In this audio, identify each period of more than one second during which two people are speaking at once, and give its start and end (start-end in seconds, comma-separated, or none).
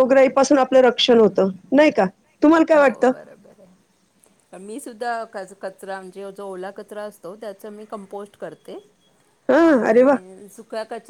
none